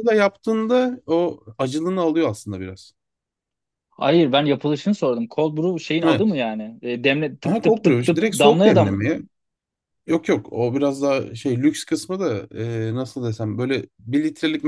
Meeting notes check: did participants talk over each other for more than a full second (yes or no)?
yes